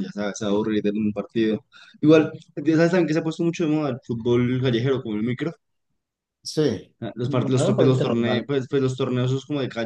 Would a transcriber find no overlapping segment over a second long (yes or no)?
no